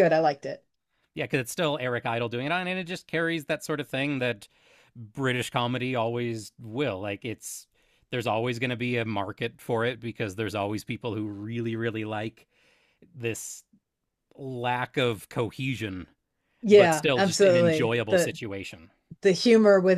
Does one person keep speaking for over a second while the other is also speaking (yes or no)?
yes